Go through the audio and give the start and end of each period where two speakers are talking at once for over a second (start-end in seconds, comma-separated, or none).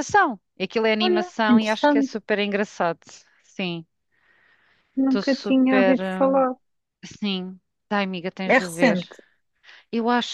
1.0-2.2, 5.0-6.5